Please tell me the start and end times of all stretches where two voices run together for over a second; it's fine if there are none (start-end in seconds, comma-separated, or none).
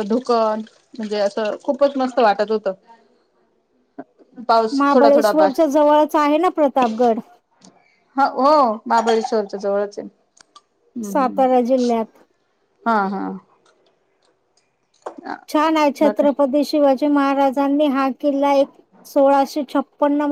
none